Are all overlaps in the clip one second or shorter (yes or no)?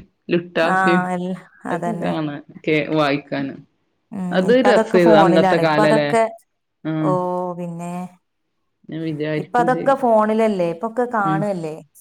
no